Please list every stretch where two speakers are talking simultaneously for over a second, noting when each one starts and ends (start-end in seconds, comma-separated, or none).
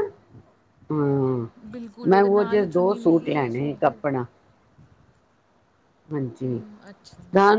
2.1-4.0